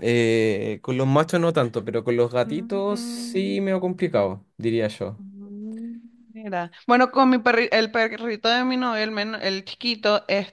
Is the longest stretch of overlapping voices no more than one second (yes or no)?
yes